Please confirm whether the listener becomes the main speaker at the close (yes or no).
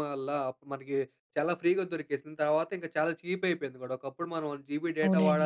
yes